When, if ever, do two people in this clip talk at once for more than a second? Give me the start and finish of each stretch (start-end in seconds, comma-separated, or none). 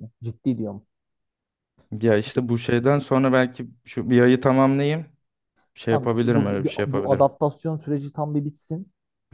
5.9-7.3